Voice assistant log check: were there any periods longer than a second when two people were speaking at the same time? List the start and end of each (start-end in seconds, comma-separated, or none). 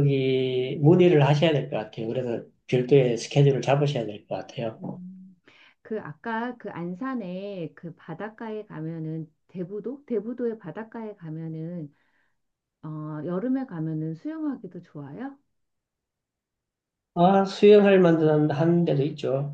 none